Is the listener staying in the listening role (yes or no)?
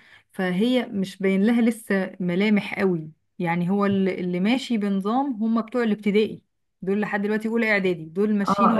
no